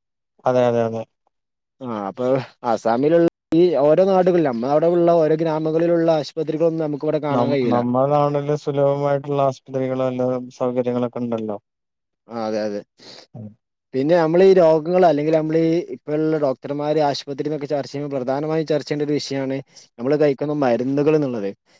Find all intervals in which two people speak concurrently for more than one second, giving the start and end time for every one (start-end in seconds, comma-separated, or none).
none